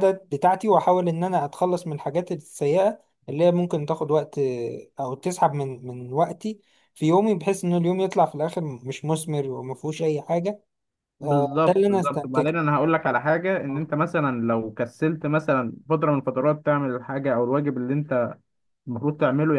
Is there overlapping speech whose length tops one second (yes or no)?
yes